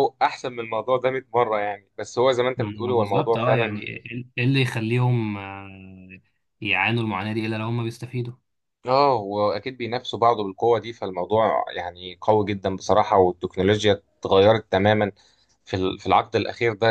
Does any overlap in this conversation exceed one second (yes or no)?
yes